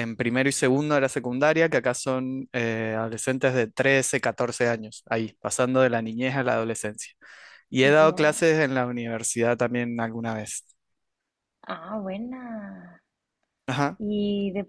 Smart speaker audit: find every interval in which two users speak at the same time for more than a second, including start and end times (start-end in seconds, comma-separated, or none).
none